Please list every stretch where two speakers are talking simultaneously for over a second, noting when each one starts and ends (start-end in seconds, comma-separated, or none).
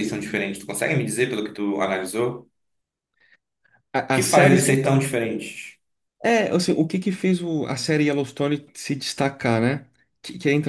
none